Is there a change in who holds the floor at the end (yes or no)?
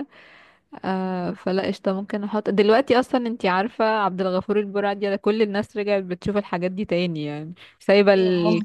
no